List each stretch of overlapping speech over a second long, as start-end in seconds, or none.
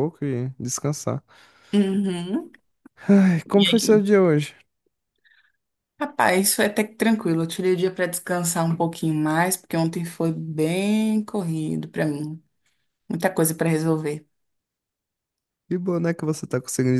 none